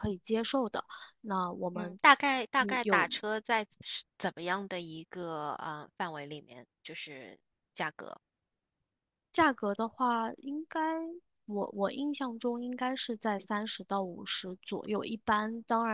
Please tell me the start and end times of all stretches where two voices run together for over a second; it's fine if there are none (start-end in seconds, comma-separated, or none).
none